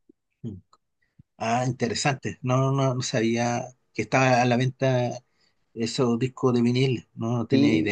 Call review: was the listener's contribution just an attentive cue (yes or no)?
no